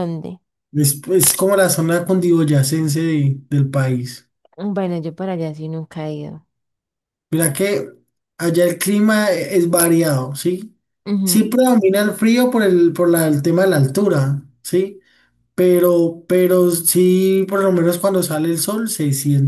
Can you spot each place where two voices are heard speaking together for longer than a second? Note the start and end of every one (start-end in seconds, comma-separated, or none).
none